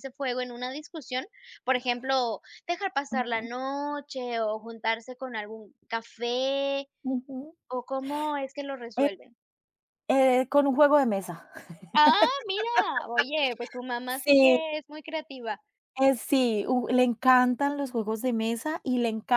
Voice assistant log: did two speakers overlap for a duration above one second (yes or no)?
no